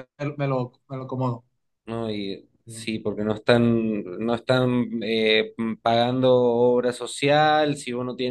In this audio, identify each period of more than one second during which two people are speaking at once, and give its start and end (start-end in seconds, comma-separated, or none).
none